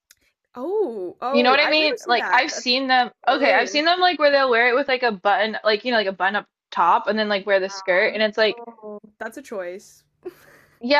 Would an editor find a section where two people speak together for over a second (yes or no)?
yes